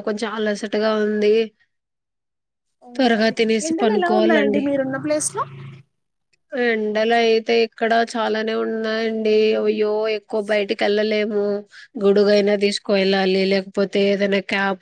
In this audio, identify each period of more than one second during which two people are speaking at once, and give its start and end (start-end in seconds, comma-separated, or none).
3.0-4.6